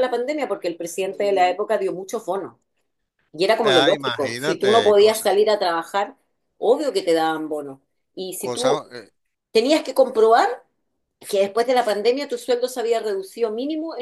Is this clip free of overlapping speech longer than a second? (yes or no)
no